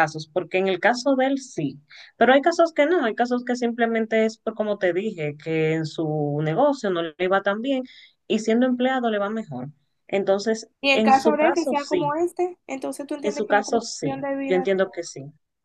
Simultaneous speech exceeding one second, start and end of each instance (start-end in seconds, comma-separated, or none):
10.8-12.2, 13.2-14.7